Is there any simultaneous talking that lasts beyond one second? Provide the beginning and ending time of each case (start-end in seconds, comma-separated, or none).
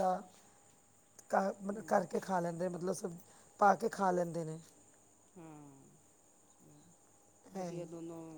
none